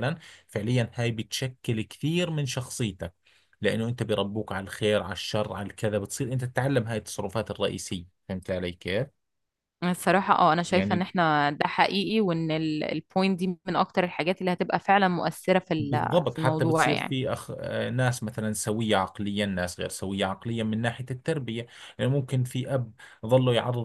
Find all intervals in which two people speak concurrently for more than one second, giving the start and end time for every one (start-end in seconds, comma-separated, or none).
15.8-17.1